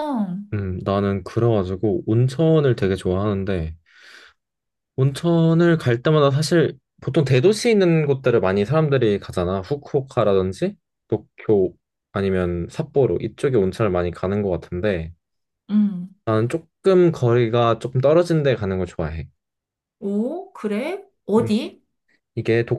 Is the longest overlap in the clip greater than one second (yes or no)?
no